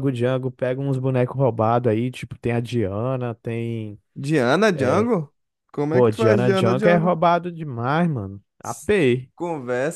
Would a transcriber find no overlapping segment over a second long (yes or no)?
no